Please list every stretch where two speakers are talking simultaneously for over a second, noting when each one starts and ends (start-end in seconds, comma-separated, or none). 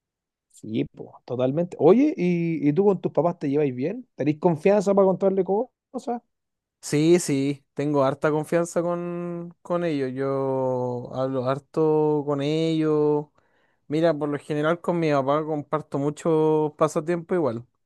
none